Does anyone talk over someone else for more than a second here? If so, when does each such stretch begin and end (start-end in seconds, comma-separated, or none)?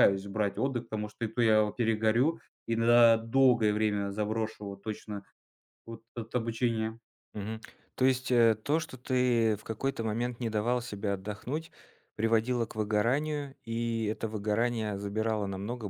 none